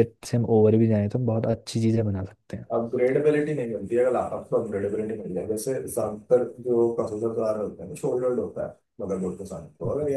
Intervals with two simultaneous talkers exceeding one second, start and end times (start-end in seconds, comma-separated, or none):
none